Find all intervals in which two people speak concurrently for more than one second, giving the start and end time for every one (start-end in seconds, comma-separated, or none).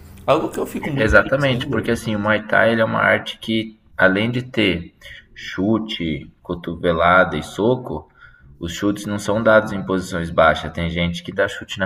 0.8-2.0